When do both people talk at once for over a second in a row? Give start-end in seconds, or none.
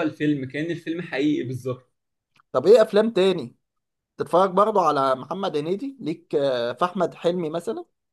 none